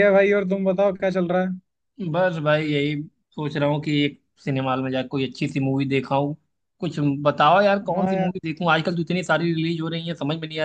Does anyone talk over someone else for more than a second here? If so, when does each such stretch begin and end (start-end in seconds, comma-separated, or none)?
none